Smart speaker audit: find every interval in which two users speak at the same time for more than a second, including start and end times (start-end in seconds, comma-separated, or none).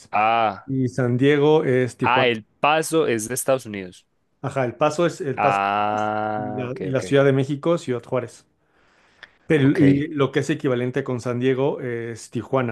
5.4-7.0